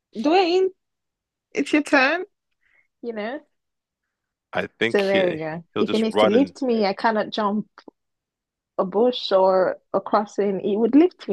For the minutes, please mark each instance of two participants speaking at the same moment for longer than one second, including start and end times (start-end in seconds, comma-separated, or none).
4.9-6.5